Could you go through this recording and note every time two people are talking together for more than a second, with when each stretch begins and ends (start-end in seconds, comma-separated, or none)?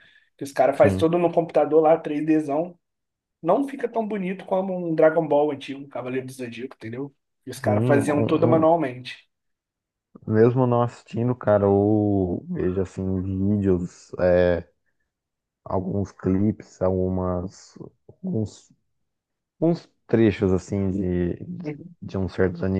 7.5-8.7